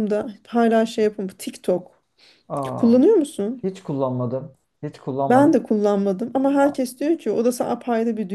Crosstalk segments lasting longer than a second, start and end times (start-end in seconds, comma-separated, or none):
none